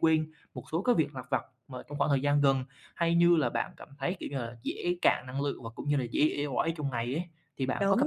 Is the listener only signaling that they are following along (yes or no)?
no